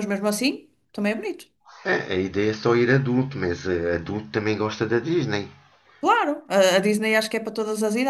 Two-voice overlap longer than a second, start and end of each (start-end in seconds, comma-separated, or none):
none